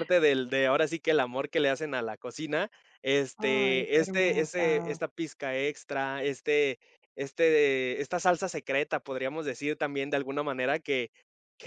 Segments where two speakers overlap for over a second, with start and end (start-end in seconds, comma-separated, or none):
3.4-5.0